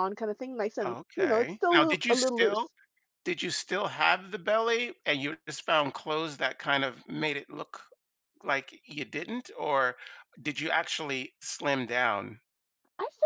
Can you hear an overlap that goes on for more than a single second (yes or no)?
yes